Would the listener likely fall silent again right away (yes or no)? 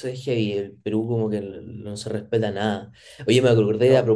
yes